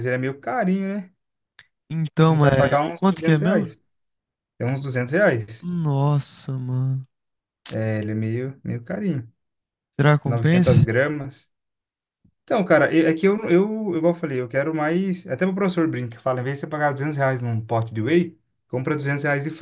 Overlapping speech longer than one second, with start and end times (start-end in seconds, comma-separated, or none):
2.2-3.7